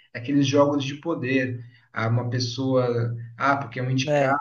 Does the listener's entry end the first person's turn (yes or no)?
no